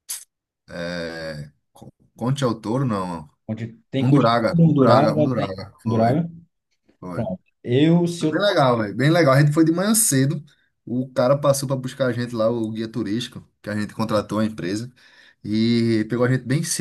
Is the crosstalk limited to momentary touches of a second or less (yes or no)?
no